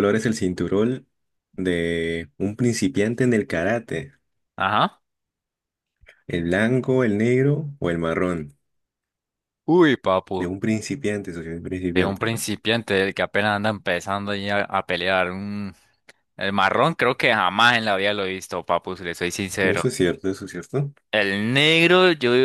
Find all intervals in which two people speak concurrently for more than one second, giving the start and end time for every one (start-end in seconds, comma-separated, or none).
none